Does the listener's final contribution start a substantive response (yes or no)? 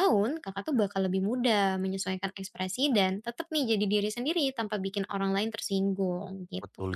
yes